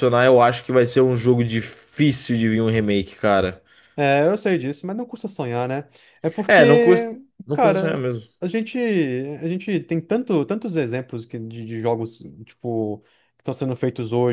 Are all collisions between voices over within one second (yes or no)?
no